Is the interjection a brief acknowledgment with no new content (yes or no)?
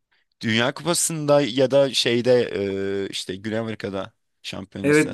no